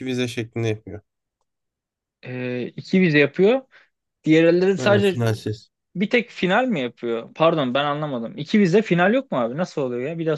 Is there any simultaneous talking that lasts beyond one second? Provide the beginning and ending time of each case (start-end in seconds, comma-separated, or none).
none